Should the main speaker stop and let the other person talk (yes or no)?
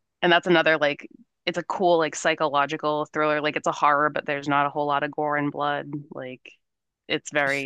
no